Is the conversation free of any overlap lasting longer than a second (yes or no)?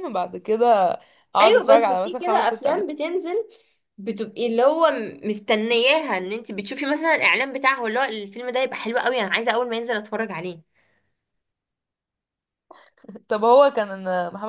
no